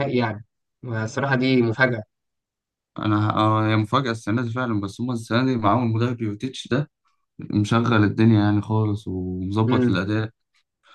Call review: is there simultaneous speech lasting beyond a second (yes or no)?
no